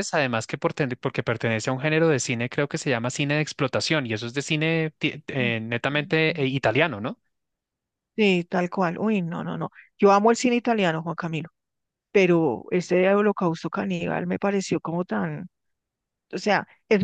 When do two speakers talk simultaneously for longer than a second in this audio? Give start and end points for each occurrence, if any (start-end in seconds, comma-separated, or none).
none